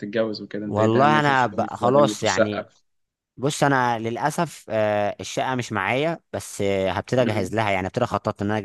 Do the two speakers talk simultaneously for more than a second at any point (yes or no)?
yes